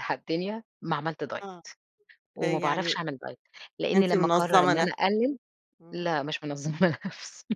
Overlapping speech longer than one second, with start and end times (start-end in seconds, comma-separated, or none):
3.9-5.3